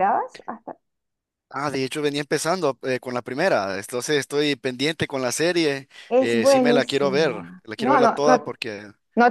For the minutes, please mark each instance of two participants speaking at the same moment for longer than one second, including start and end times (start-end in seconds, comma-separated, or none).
6.1-8.5